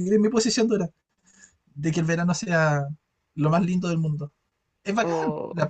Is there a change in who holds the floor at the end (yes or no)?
no